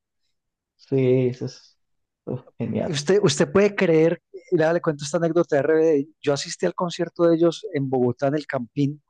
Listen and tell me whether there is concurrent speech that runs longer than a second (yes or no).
no